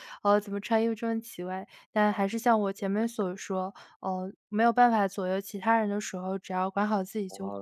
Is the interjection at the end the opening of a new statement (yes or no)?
yes